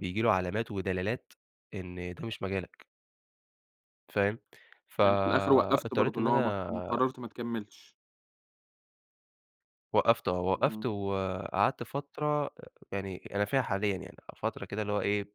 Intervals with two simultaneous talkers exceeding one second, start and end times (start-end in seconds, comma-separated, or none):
5.0-6.7